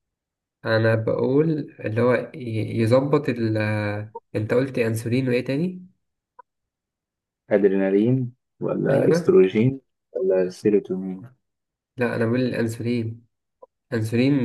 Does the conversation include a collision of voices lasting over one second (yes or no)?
no